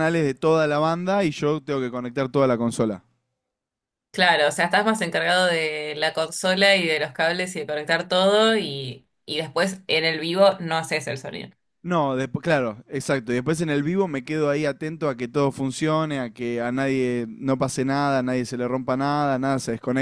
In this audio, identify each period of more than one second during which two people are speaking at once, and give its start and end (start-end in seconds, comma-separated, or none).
none